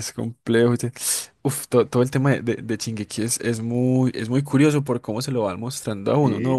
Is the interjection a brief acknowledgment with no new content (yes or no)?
no